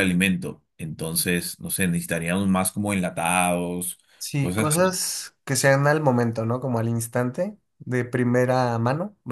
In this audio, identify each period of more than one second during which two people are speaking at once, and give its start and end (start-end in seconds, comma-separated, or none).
none